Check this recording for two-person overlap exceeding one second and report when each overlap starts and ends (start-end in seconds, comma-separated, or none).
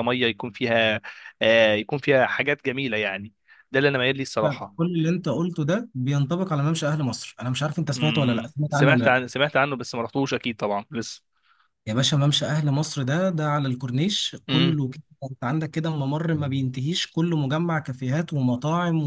8.0-9.2